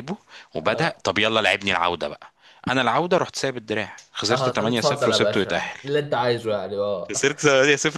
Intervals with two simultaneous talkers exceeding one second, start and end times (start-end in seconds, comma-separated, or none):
4.3-5.8